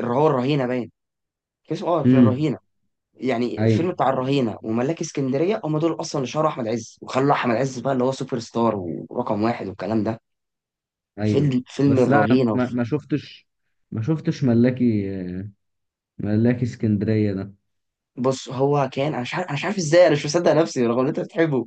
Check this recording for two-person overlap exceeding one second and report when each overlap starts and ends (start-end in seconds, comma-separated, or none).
11.2-12.7